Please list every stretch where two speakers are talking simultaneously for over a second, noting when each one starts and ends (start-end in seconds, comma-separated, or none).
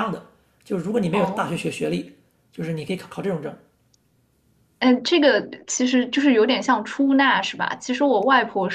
none